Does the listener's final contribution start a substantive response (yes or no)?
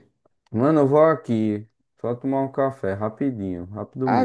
yes